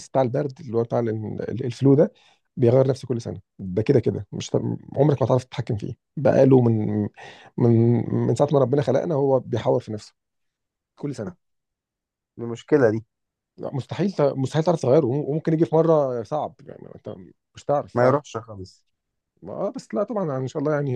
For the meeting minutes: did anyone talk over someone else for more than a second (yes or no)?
no